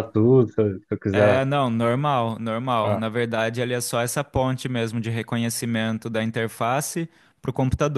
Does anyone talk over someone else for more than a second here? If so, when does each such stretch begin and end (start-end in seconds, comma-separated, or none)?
none